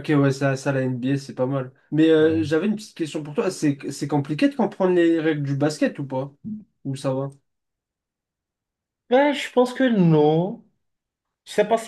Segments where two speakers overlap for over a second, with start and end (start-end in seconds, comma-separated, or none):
none